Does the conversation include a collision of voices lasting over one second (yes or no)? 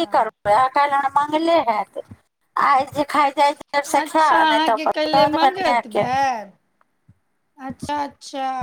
yes